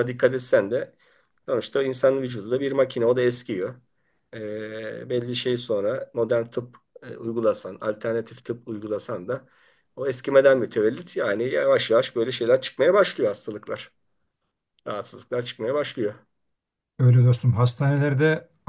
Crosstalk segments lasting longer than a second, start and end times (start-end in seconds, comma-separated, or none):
none